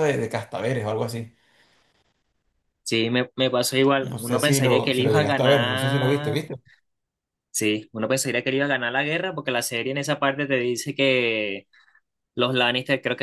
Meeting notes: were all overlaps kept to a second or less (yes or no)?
no